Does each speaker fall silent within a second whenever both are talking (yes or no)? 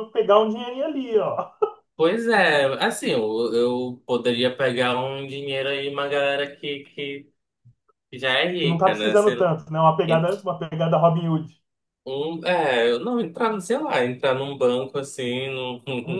yes